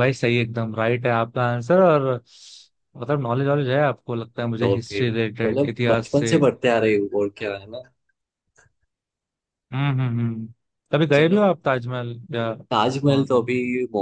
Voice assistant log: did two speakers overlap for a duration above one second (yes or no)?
yes